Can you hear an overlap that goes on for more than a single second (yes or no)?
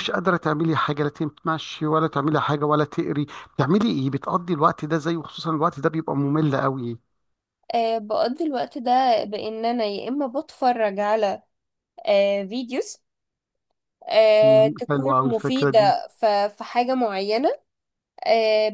yes